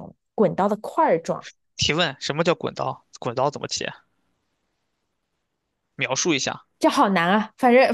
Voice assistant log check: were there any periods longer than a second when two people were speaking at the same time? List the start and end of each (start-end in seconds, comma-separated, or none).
none